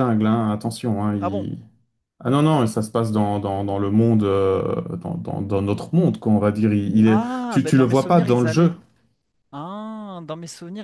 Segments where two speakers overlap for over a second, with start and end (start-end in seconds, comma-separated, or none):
7.0-8.7